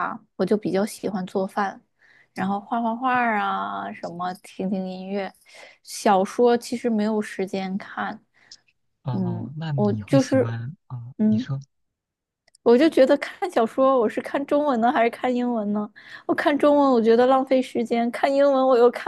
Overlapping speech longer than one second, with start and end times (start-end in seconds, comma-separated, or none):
9.1-10.5